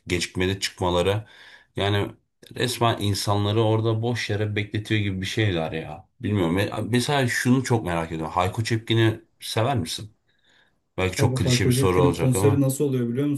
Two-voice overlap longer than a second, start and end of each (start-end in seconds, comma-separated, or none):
11.2-12.6